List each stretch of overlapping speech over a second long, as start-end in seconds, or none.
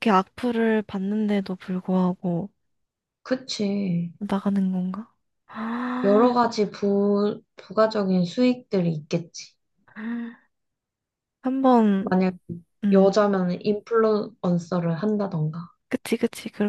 none